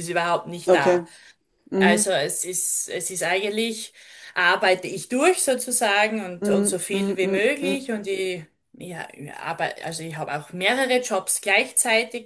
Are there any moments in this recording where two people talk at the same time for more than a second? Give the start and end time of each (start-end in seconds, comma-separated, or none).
6.4-7.9